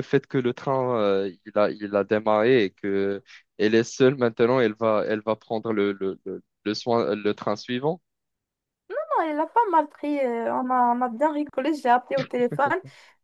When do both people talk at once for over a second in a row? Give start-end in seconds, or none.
none